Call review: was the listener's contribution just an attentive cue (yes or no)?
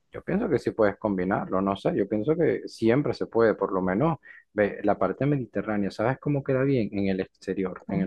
yes